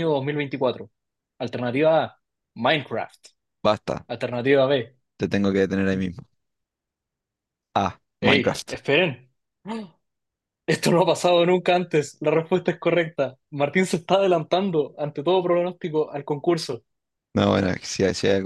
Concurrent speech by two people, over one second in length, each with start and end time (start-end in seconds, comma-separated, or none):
none